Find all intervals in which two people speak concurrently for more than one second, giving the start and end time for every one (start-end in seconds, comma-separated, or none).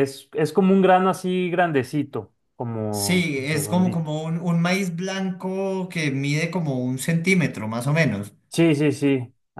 2.9-4.1